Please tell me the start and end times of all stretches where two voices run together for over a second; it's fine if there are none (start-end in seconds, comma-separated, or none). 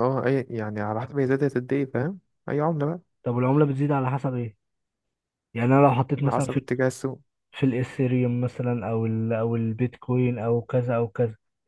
none